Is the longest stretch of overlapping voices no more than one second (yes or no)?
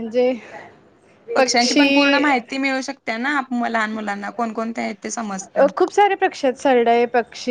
yes